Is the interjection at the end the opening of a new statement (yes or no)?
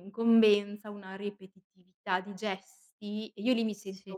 no